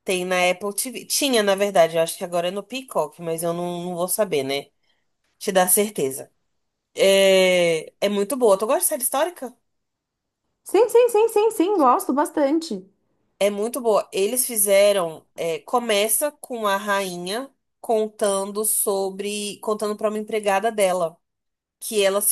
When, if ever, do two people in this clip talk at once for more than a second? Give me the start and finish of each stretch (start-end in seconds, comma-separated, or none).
none